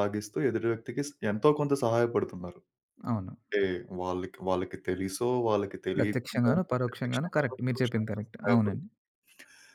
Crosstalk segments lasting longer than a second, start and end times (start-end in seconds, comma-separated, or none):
5.9-8.8